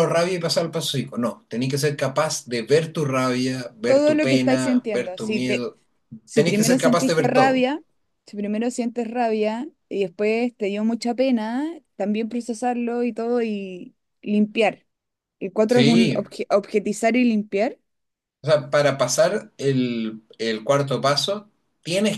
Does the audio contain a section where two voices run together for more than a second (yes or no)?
yes